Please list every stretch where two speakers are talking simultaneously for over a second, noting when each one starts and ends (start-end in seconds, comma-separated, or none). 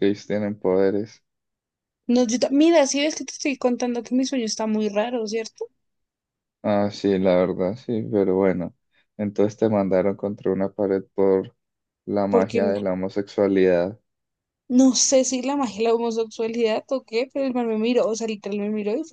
none